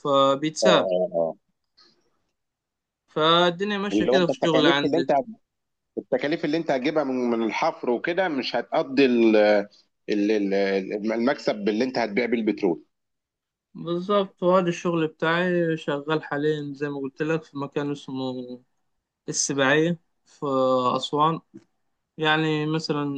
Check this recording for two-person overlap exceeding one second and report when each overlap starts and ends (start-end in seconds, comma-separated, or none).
3.9-5.1